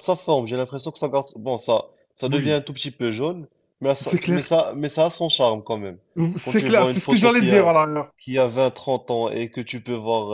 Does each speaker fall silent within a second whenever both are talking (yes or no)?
no